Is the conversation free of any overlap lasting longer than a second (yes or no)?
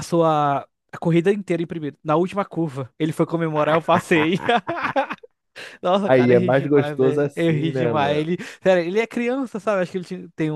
no